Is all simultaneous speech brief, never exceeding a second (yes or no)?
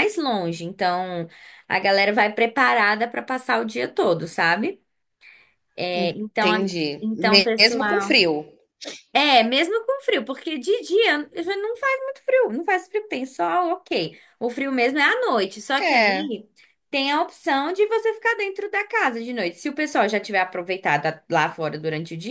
no